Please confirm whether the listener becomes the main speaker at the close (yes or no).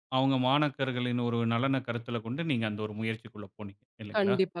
yes